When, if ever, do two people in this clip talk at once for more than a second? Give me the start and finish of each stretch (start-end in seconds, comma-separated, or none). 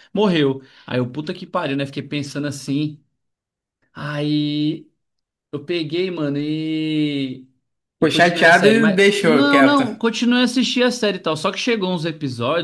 8.0-9.9